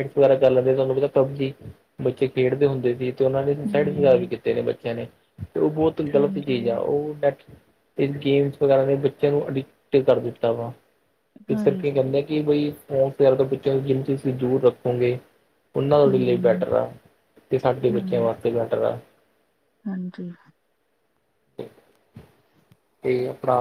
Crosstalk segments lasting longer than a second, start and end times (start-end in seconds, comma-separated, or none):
none